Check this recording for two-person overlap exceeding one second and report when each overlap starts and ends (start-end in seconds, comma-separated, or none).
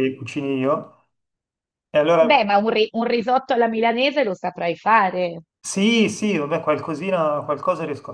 none